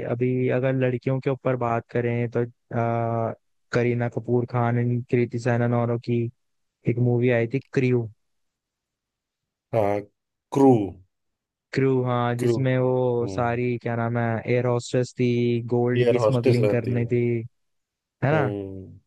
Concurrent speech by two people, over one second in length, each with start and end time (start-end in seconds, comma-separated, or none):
15.9-17.1